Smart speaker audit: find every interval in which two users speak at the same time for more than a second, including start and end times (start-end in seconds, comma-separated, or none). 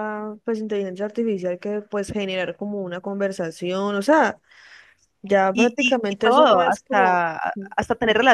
5.5-7.2